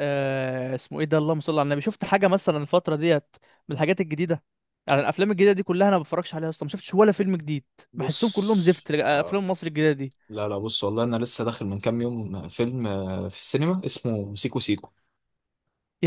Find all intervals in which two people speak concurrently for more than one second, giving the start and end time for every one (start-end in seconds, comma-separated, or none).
7.9-9.4